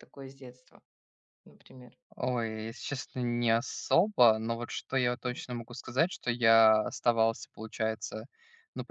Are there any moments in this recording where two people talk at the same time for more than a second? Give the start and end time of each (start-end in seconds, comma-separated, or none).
none